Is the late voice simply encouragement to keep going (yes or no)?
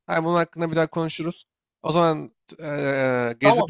no